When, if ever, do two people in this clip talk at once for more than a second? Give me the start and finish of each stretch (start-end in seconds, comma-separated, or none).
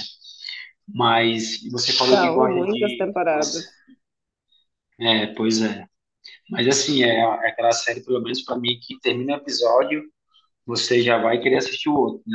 2.1-3.6